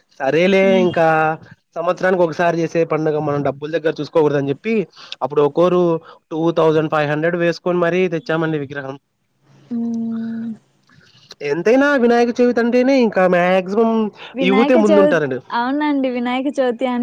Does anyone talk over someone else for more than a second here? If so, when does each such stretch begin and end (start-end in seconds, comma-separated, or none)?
none